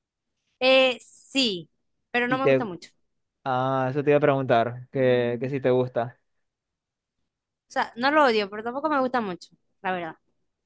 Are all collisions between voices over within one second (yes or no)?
yes